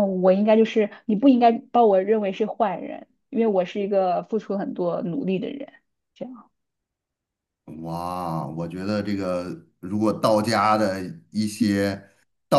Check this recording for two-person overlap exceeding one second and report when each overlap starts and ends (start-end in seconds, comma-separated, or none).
none